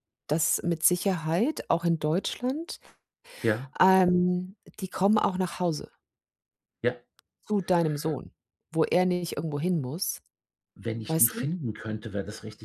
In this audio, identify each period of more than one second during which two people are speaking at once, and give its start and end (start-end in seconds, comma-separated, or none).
none